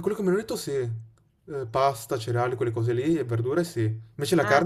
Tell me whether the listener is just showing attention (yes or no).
yes